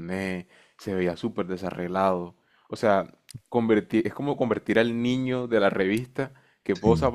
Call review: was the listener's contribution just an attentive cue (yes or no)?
yes